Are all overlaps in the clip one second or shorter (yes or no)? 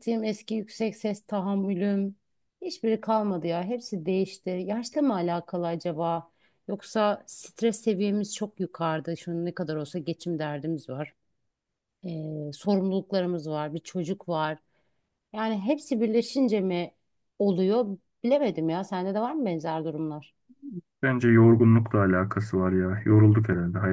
yes